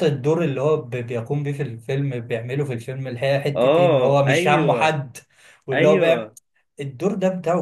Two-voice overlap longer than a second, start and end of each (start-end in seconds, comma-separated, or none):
3.6-5.0